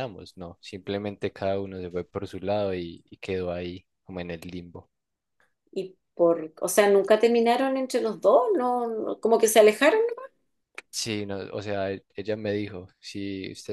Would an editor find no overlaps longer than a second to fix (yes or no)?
yes